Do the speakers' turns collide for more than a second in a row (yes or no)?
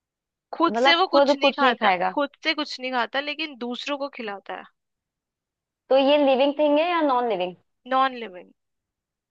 yes